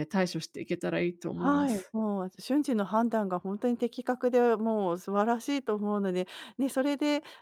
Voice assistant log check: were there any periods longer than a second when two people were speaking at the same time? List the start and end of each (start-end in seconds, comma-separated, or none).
none